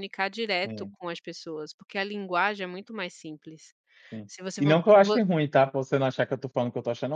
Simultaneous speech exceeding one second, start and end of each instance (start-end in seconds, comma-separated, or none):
none